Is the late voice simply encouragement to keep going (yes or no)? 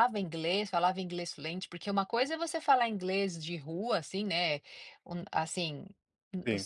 yes